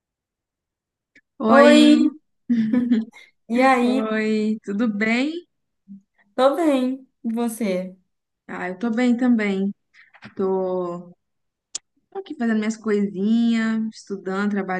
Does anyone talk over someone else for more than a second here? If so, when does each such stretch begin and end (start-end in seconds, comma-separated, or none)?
none